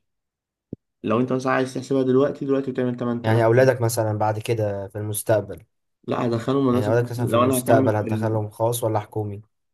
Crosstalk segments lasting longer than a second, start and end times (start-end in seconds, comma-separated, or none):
6.7-8.4